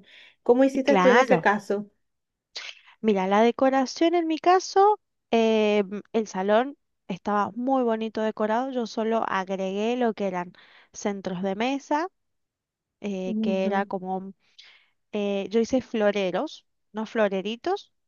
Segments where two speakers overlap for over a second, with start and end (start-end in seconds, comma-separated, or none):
none